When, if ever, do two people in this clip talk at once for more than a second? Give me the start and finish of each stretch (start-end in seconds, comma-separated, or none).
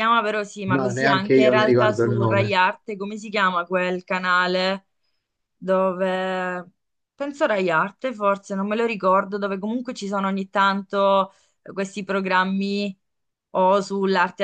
0.7-2.5